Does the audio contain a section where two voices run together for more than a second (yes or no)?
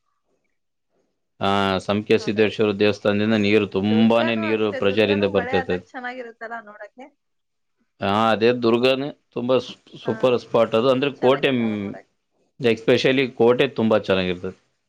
yes